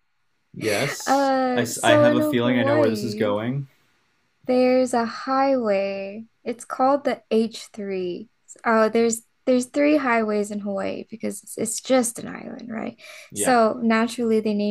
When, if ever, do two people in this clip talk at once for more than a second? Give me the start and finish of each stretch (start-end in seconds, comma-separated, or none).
1.1-3.4